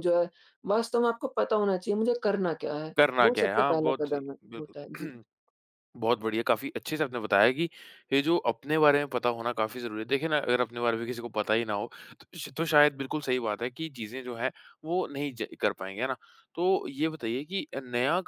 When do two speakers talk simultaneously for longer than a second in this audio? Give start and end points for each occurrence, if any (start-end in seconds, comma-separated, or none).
3.0-5.1